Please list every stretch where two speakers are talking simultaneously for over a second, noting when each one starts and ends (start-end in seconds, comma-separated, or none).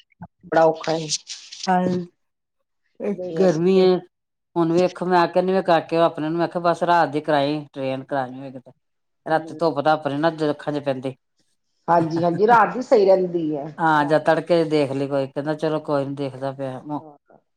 none